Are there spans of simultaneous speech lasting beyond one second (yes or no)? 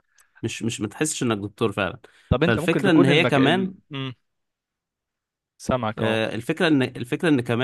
yes